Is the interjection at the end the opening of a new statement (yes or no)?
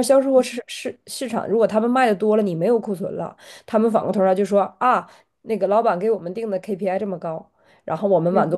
no